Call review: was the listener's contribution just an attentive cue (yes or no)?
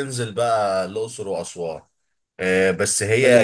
yes